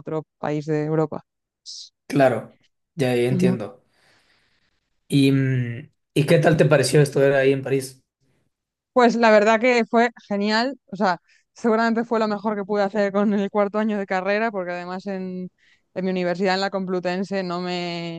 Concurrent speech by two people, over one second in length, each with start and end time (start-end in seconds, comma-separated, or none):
none